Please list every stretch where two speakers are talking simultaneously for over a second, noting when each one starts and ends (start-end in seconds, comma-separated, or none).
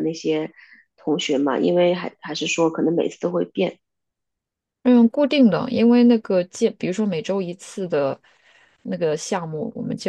none